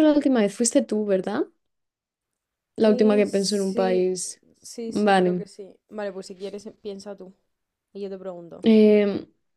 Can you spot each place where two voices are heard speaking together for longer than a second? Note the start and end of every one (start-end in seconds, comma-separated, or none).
2.8-4.1